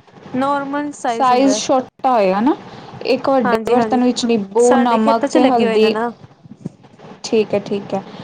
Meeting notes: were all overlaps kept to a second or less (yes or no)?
no